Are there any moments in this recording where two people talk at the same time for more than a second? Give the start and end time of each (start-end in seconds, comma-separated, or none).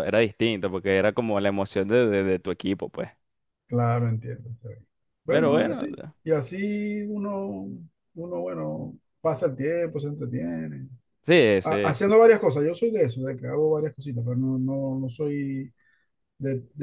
none